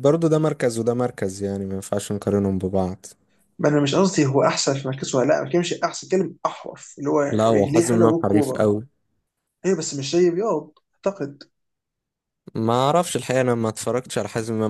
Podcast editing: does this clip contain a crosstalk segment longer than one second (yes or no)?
yes